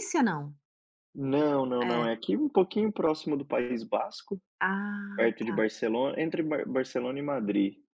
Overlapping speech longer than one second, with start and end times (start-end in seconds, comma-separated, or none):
none